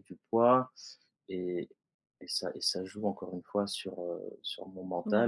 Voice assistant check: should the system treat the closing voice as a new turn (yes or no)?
no